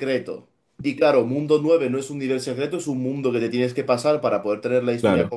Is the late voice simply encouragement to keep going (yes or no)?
yes